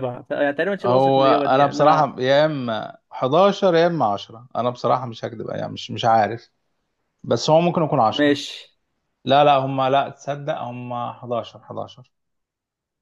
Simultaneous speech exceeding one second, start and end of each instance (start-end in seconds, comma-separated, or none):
0.8-2.1